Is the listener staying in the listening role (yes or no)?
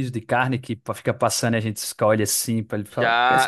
no